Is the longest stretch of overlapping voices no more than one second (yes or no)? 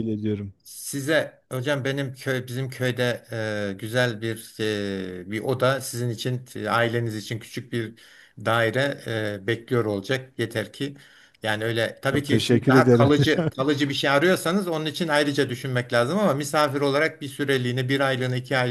no